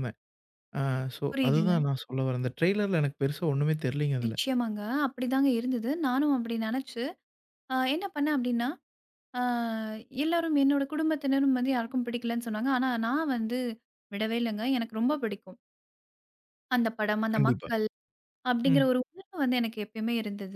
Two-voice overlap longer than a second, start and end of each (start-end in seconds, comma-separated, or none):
none